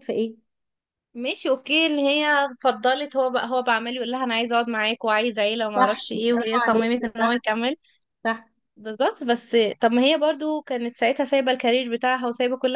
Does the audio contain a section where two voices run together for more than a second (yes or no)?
yes